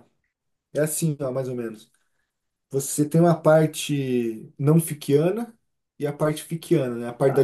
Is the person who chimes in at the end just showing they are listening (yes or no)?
no